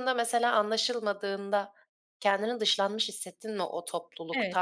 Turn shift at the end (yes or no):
yes